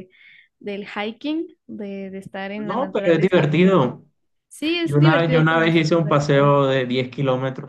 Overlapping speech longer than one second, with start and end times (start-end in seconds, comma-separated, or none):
2.6-4.0, 4.8-6.5